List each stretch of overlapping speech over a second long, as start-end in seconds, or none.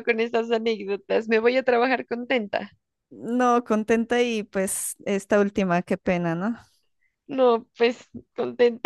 none